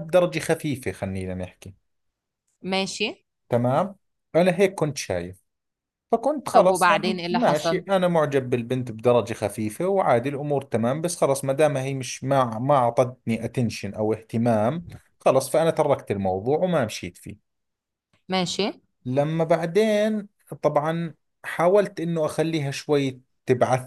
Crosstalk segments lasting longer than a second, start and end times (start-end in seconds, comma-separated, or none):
6.5-7.8